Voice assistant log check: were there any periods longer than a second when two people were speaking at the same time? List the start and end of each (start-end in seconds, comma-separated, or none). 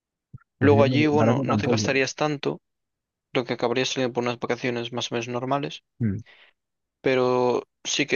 0.6-2.0